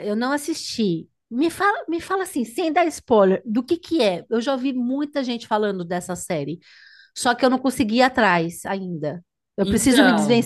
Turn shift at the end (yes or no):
no